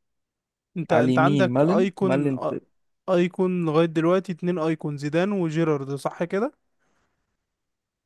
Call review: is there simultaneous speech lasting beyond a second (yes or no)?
yes